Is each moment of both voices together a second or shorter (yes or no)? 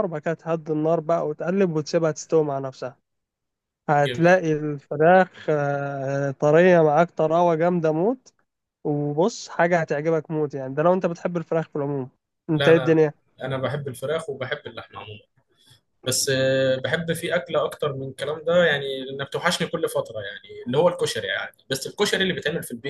yes